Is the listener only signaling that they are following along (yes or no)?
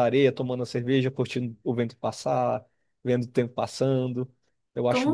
no